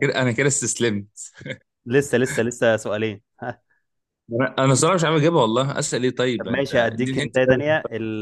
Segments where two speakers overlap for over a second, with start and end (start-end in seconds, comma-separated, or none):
6.4-7.6